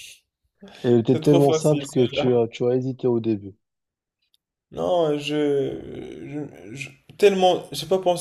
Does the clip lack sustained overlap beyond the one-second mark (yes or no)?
no